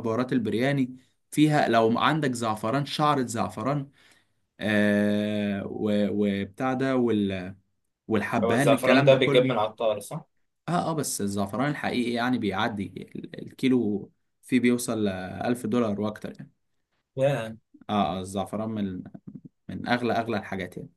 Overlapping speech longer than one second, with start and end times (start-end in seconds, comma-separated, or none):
8.4-9.6